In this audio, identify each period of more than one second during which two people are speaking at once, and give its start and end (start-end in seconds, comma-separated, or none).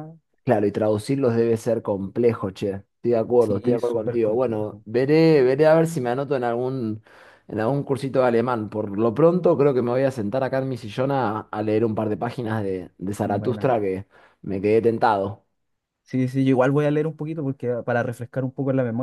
3.4-4.8